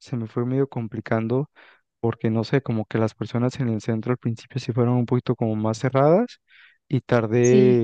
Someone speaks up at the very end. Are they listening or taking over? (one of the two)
listening